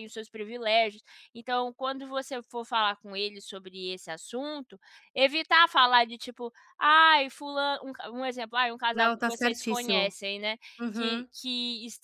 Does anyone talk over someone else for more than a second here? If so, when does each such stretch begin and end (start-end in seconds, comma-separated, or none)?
8.9-10.1